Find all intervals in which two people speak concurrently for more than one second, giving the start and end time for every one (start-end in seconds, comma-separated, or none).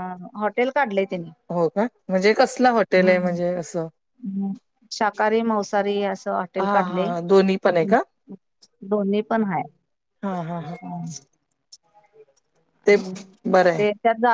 none